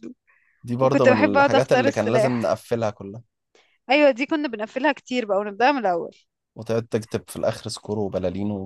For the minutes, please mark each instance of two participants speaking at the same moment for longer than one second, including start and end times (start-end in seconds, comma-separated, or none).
0.8-2.6